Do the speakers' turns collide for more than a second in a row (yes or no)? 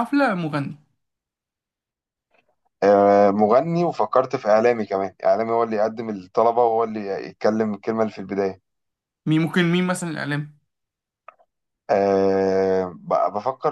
no